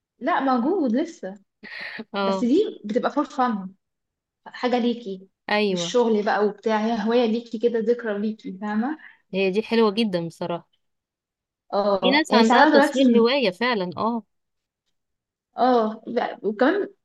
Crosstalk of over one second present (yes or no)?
yes